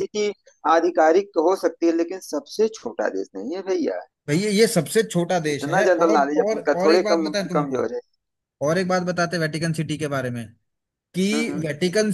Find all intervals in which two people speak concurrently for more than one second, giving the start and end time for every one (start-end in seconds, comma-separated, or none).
5.5-7.8